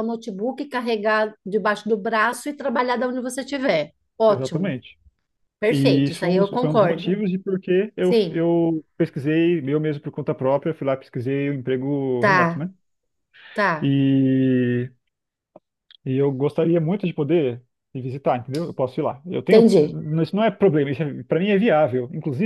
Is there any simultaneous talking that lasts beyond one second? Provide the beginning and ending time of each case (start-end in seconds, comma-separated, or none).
5.7-7.2